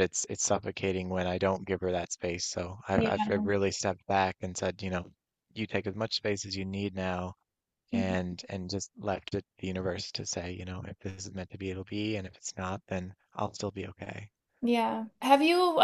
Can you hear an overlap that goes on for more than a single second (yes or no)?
no